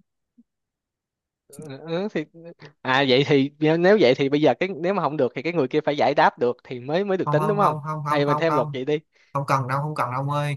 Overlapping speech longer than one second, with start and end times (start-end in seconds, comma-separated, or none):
7.2-8.8